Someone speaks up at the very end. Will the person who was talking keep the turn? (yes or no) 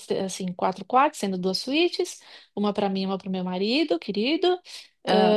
yes